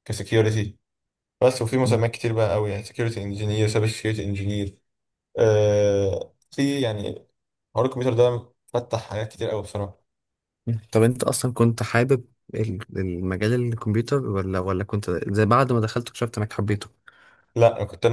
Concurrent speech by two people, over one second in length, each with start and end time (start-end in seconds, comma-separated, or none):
none